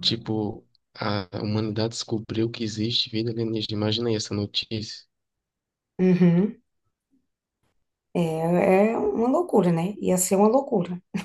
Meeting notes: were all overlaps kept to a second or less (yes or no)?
yes